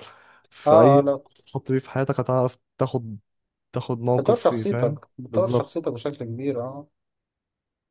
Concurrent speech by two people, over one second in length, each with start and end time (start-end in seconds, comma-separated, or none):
4.2-5.8